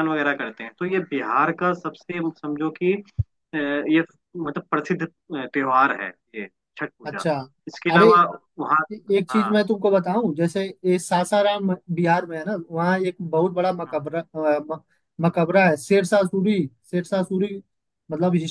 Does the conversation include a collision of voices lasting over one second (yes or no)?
no